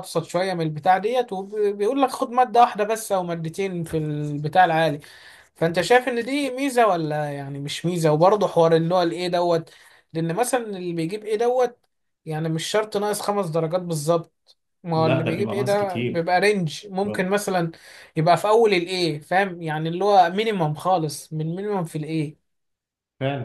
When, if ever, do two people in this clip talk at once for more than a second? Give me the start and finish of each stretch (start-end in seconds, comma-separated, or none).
14.9-16.2